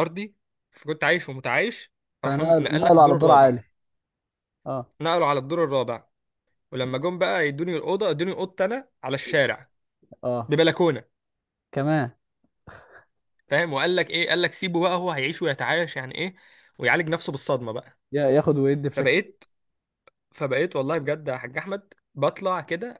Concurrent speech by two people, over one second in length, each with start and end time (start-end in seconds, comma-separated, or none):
2.2-3.6